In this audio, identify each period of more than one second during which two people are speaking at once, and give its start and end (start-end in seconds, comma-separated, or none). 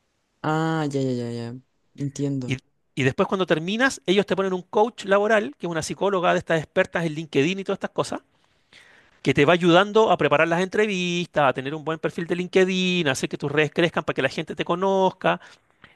none